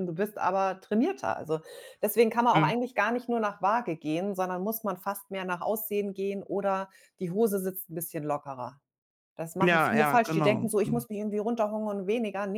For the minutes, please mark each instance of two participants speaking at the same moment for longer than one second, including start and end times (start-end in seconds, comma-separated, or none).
9.6-11.1